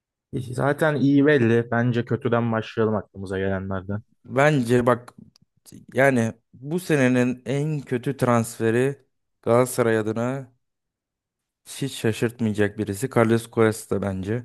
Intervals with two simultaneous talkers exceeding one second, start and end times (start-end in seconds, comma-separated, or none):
none